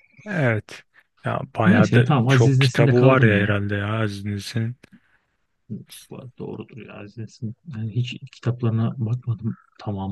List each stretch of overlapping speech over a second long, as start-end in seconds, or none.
1.7-3.5